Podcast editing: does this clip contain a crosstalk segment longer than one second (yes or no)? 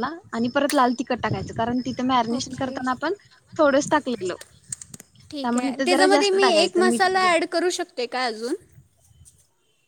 no